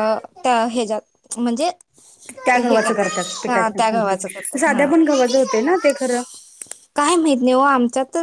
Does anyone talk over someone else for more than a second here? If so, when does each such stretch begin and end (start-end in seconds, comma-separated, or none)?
3.5-4.9